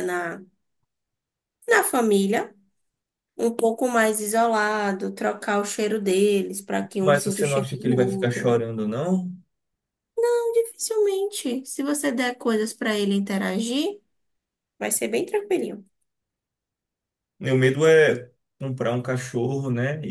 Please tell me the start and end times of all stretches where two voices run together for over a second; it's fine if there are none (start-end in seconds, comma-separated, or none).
7.0-8.6